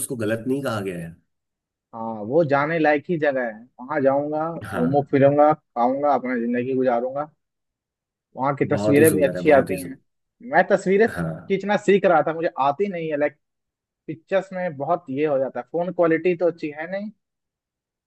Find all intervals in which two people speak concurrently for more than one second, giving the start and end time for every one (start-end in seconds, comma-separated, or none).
8.7-10.0